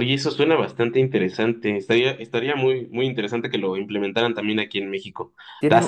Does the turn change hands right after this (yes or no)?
no